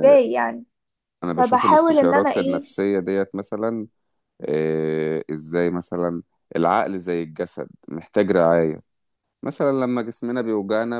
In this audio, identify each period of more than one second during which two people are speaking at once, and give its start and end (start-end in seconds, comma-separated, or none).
1.4-2.6